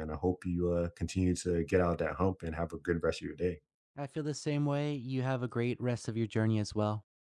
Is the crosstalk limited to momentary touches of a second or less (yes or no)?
yes